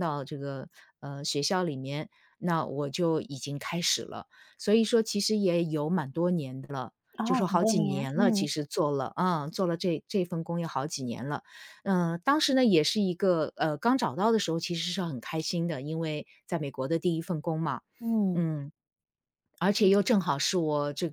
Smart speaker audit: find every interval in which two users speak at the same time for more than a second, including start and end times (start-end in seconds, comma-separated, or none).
7.2-8.5